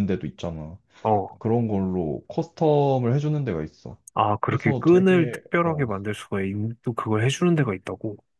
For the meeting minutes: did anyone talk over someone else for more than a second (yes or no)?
yes